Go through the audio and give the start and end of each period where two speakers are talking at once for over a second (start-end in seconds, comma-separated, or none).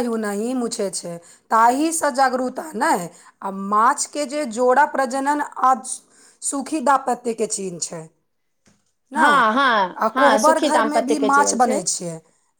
9.2-11.8